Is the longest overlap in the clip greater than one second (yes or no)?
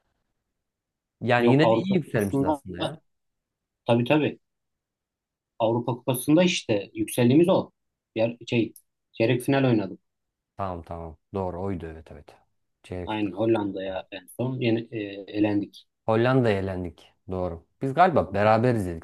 yes